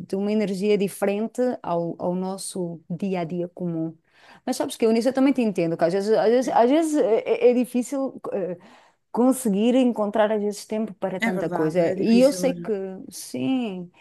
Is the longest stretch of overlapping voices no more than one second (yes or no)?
no